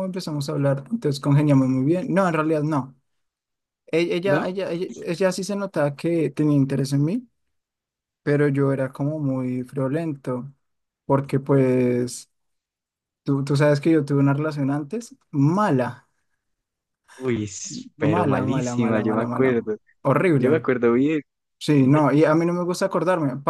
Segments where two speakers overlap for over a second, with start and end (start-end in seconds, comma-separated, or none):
18.0-19.6